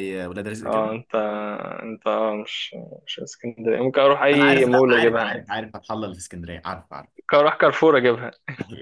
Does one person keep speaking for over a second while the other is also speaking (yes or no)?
yes